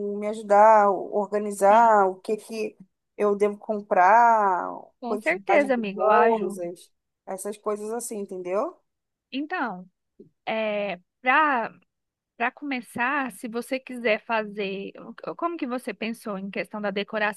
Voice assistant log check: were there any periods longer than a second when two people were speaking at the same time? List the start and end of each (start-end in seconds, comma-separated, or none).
5.1-6.6